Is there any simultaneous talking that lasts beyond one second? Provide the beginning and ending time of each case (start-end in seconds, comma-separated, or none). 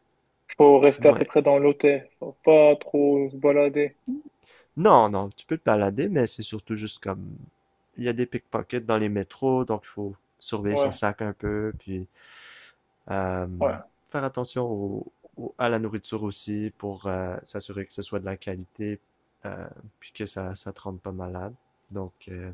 none